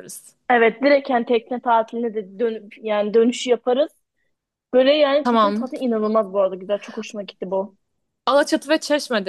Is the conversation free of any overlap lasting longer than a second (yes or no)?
yes